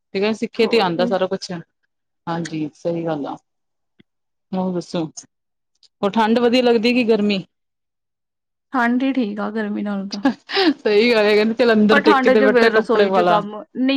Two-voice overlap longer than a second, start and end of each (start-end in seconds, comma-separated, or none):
11.9-13.4